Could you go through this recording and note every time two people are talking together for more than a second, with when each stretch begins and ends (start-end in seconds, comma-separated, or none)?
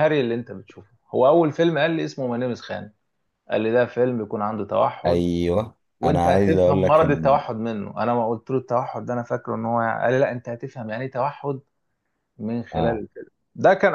6.0-7.4